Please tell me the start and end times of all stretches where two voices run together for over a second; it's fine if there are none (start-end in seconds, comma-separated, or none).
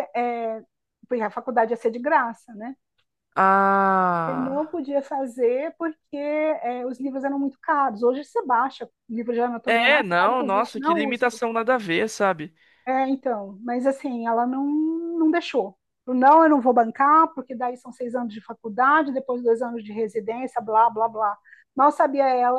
9.7-11.4